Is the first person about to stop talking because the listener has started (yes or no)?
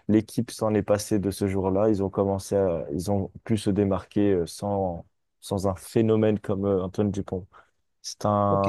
yes